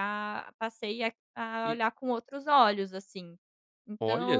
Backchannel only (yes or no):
no